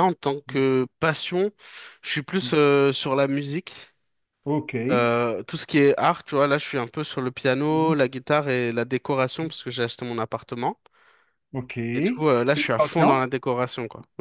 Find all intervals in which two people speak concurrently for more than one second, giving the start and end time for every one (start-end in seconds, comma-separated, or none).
11.9-13.2